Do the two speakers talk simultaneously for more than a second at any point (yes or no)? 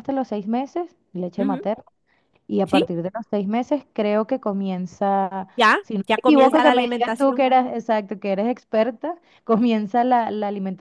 yes